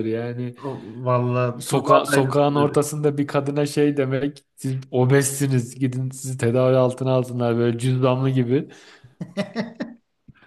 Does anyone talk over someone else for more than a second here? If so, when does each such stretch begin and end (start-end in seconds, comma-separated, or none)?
1.6-2.8